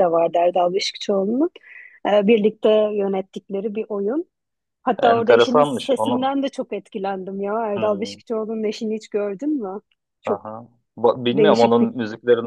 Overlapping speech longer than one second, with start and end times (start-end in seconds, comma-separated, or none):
5.0-6.3